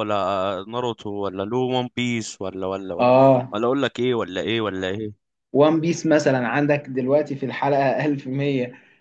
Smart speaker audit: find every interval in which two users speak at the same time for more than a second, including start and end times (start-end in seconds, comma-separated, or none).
none